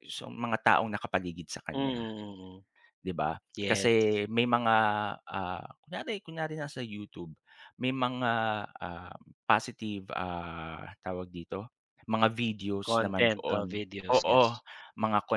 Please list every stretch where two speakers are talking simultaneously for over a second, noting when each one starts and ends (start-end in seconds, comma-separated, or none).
12.8-14.6